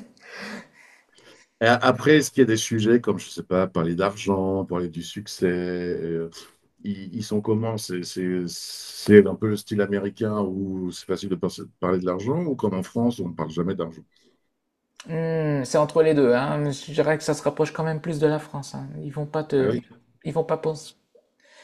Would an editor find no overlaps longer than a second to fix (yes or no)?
yes